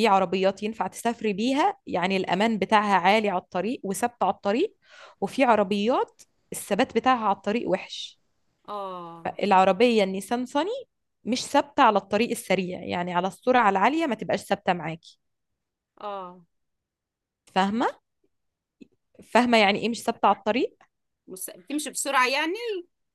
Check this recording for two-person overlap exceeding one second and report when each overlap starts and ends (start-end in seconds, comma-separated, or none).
none